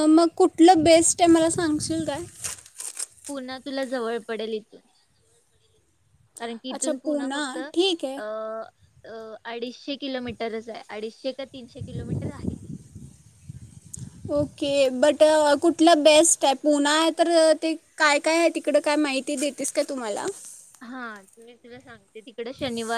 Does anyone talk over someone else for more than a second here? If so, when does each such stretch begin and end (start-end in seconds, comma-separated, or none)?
none